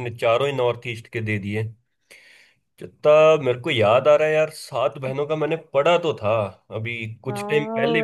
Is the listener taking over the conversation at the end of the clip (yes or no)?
yes